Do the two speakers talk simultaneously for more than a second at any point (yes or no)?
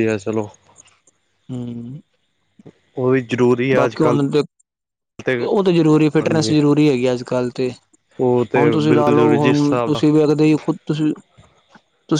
yes